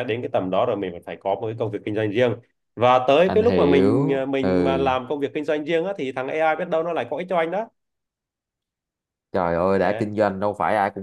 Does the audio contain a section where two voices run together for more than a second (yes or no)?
yes